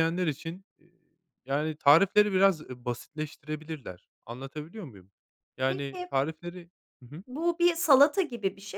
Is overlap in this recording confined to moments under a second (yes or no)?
yes